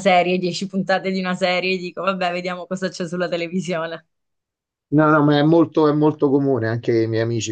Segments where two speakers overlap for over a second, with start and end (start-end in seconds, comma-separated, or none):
none